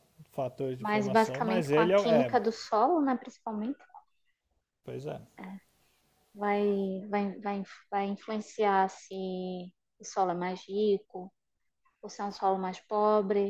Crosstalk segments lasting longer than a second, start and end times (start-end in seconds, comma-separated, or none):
0.8-2.4